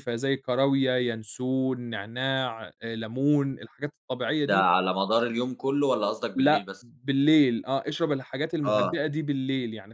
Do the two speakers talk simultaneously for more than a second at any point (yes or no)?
no